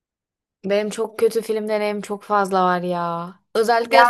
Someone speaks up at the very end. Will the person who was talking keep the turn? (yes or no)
yes